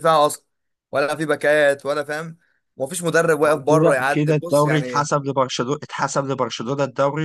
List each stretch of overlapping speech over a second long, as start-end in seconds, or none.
3.4-5.1